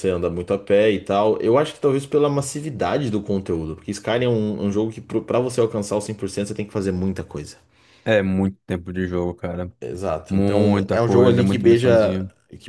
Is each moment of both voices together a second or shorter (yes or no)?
no